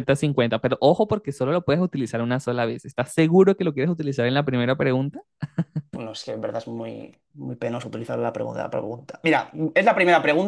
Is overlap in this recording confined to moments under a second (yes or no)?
yes